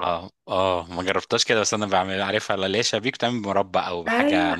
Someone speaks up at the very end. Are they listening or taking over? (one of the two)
taking over